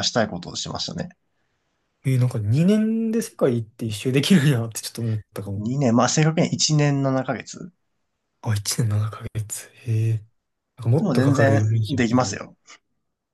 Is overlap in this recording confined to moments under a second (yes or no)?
no